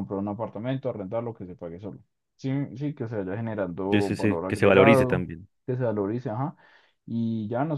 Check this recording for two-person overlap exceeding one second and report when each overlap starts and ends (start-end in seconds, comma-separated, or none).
3.9-5.2